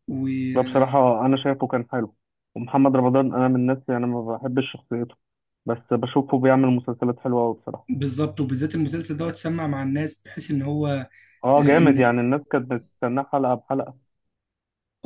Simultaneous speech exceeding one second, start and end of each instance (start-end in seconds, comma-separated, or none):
none